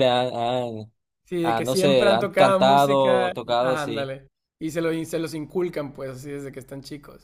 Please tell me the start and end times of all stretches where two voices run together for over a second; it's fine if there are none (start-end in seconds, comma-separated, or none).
1.4-4.1